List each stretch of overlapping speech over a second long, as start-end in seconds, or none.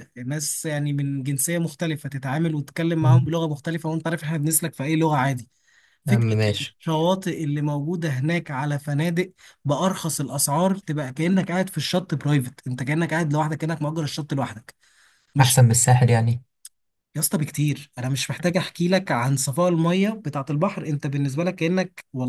none